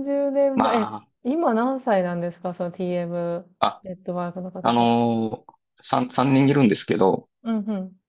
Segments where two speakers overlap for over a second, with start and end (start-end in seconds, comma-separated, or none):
3.6-4.9